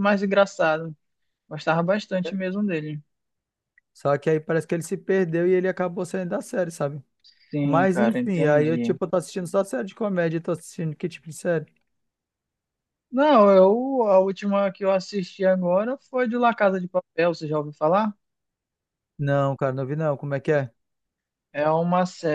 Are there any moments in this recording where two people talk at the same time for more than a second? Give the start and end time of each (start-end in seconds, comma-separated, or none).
7.6-9.0